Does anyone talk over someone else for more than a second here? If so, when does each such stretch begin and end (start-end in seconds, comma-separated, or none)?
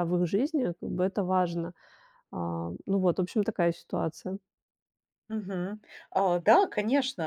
none